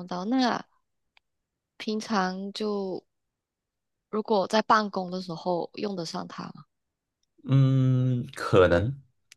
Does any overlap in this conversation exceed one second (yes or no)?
no